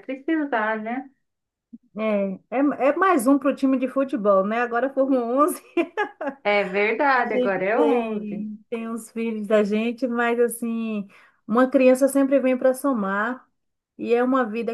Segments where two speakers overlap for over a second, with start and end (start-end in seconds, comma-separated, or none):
7.2-8.4